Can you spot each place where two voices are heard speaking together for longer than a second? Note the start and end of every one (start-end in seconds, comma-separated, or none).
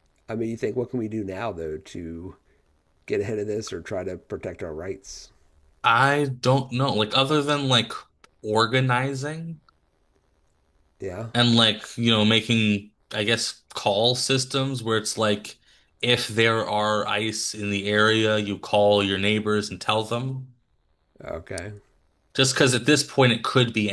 none